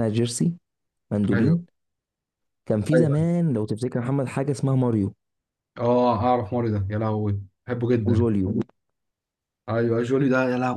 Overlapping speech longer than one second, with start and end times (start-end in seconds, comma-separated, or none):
none